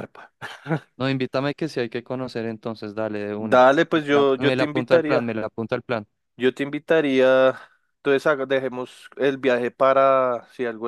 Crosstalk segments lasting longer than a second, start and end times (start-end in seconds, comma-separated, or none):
3.4-5.3